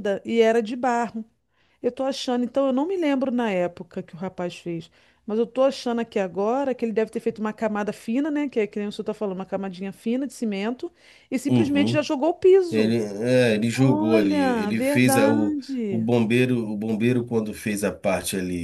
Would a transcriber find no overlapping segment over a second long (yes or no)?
no